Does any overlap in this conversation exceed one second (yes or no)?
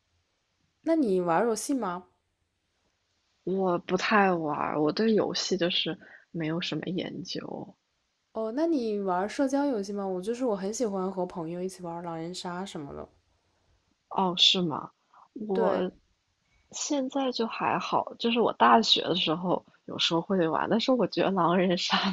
no